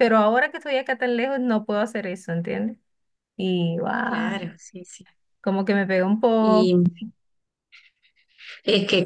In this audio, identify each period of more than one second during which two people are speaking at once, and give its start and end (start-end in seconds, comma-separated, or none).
none